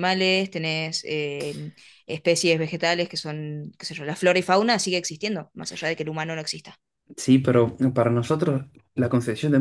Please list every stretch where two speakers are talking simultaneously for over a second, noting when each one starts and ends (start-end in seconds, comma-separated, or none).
none